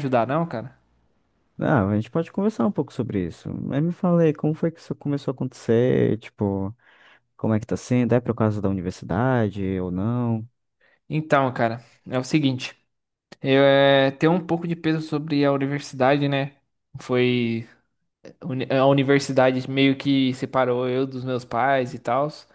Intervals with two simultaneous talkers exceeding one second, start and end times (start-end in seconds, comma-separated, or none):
none